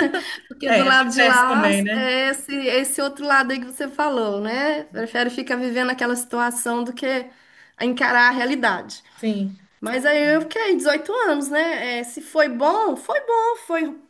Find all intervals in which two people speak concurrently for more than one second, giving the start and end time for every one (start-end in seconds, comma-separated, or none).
0.7-2.1